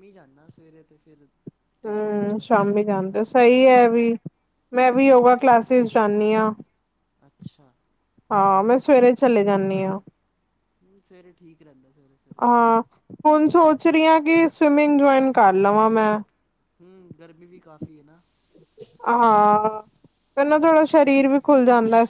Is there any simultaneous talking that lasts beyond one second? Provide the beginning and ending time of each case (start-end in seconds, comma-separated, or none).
1.9-3.2